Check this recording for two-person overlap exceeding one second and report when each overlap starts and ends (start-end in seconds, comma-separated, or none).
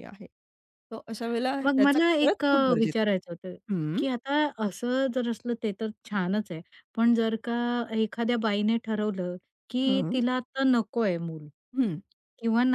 1.6-3.1